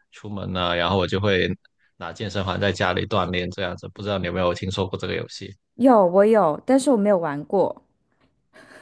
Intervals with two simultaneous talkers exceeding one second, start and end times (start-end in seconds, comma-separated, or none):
none